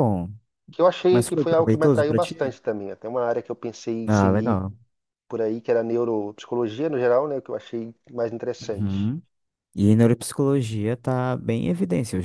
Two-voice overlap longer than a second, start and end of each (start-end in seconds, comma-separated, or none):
1.1-2.5